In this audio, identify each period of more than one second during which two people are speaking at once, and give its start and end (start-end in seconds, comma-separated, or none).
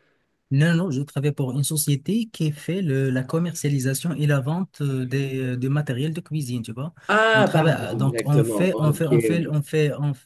7.3-9.6